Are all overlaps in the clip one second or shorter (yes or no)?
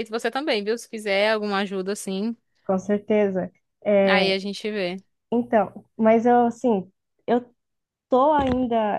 yes